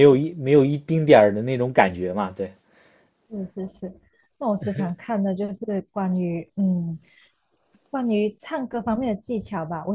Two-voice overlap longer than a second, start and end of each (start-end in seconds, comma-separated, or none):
none